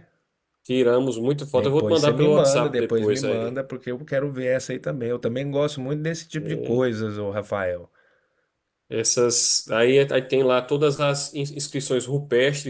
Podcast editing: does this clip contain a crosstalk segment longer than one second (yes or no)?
yes